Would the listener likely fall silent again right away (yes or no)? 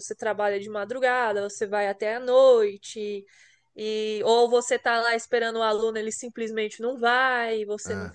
yes